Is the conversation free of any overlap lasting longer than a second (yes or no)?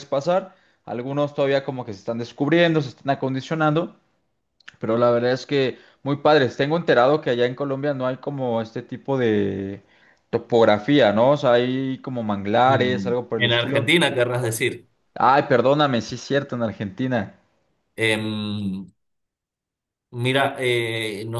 no